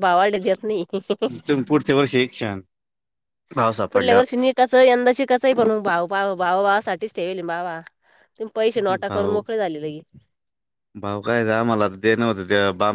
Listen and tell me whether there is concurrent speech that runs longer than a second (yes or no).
no